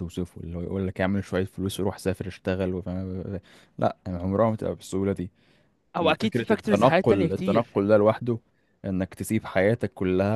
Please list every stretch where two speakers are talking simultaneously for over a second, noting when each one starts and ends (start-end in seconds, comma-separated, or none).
6.2-7.7